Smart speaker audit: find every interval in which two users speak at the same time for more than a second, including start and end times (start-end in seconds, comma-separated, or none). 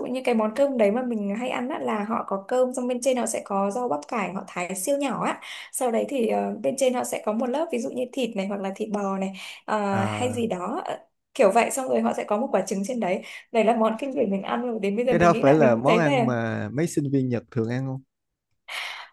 15.1-16.3